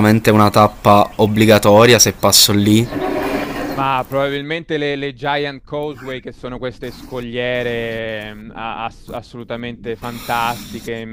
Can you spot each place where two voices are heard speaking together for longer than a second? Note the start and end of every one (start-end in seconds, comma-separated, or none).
none